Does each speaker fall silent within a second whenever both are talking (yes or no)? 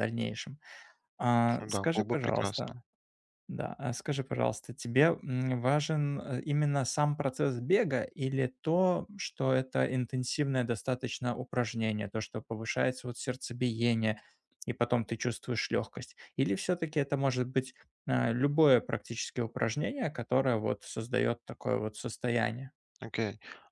no